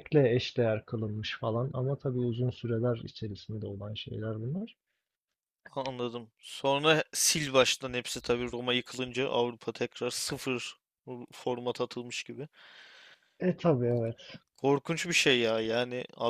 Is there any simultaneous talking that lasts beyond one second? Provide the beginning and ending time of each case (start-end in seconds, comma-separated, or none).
none